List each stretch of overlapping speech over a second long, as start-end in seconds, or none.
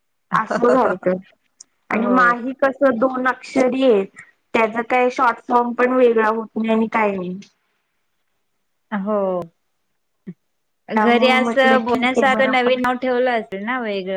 10.9-12.8